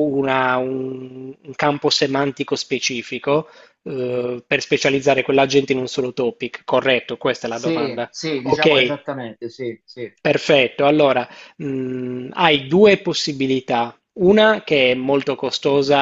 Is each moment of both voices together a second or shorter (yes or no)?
no